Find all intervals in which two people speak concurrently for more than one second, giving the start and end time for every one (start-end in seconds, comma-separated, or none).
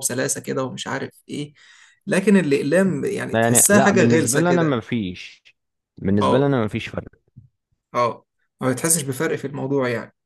3.3-4.8